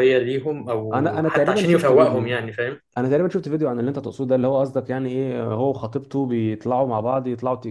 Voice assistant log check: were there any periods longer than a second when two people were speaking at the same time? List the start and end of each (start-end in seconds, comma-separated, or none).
0.9-2.4